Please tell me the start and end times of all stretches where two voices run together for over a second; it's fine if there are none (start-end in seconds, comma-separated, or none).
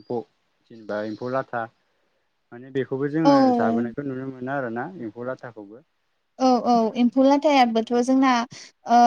6.8-8.3